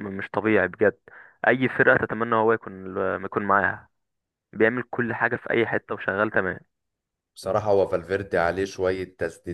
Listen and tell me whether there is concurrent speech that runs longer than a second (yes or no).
no